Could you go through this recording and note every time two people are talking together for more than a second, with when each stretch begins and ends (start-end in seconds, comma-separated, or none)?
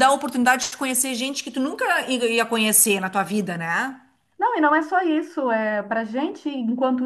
none